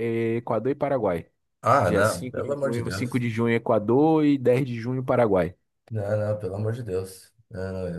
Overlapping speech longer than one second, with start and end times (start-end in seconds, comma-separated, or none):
1.8-3.2